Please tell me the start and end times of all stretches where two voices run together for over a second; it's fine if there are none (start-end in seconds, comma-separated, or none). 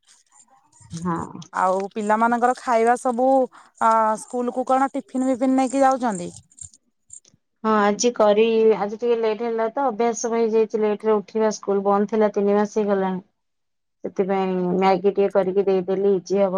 none